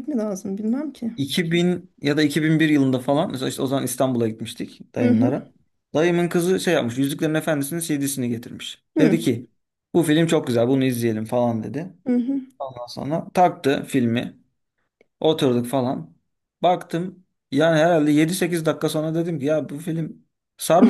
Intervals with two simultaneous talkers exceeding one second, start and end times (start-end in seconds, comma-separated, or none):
none